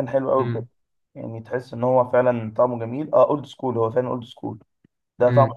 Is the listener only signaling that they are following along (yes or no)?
yes